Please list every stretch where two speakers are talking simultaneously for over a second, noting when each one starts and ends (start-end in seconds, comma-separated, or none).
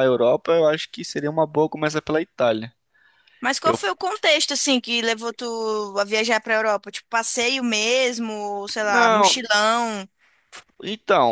none